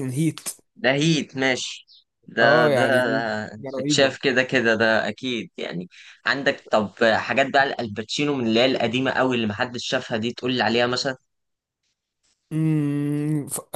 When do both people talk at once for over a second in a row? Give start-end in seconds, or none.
none